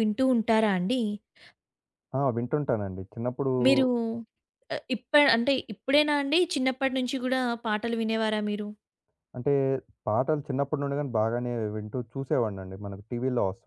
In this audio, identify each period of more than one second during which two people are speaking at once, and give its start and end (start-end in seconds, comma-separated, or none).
none